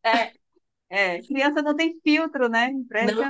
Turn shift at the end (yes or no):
yes